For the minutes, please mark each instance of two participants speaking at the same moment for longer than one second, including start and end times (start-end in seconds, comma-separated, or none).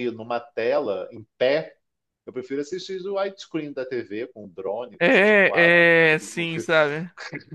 5.0-6.5